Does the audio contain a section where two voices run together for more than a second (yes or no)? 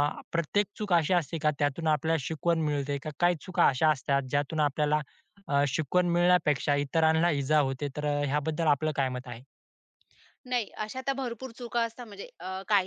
no